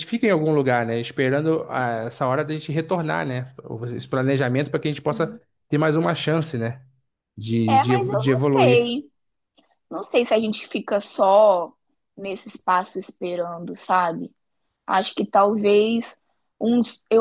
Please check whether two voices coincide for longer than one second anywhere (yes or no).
yes